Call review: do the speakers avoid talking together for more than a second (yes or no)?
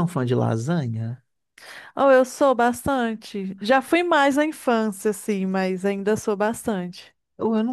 yes